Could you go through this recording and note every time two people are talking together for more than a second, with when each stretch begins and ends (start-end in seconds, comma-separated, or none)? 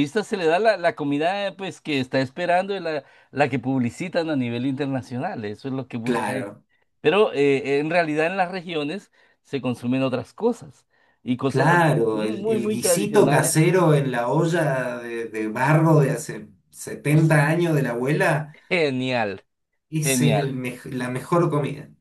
11.5-13.6